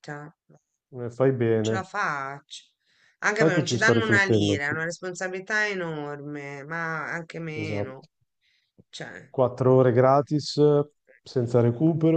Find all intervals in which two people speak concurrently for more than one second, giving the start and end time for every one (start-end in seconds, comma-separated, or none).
3.3-4.8